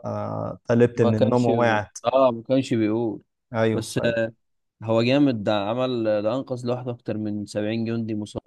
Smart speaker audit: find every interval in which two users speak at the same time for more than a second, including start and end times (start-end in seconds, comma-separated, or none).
none